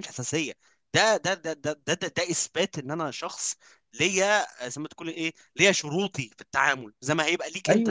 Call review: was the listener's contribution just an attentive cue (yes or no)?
no